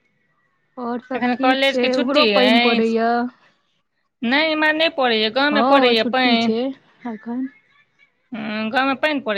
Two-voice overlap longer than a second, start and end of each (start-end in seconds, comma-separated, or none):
1.2-2.9